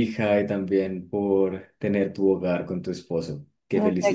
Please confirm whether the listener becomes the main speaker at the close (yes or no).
yes